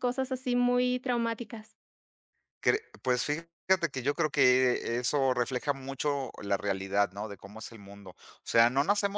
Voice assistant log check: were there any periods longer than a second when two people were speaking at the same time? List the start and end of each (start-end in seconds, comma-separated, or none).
none